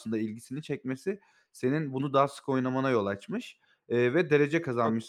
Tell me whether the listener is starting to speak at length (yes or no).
no